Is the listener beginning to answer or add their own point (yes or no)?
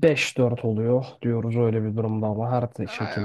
yes